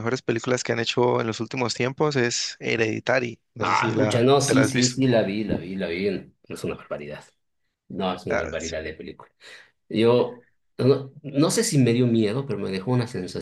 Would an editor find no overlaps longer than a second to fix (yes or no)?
no